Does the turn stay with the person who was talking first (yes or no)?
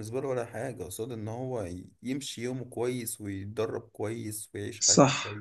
no